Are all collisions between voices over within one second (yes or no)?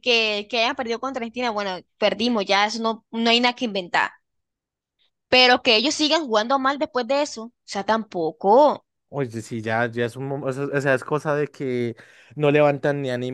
yes